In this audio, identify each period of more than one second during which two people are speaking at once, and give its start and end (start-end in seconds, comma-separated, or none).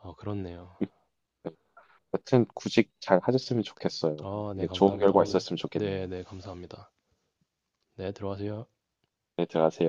4.2-6.1